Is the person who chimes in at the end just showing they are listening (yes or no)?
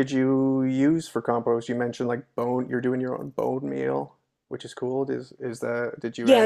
no